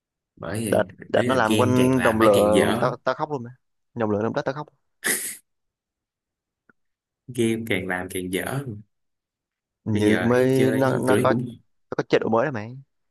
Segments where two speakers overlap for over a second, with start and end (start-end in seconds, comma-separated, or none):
0.7-2.9, 9.9-11.3